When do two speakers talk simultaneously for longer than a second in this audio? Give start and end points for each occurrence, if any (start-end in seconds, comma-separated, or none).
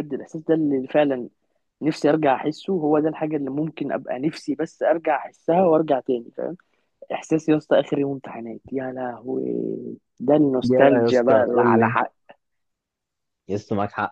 10.6-12.0